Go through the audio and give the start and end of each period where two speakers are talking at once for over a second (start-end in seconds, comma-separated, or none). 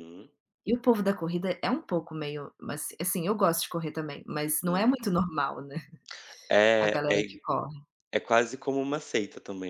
none